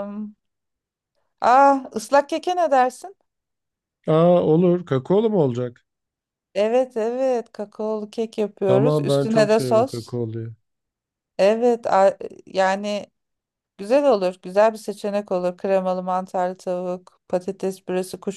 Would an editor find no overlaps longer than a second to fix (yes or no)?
no